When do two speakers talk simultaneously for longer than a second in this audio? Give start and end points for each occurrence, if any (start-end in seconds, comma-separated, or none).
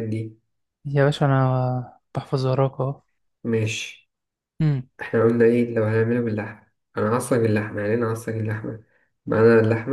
none